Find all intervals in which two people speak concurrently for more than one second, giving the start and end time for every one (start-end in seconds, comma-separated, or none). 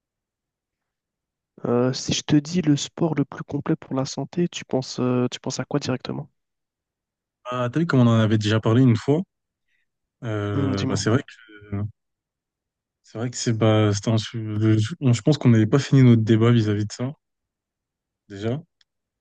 none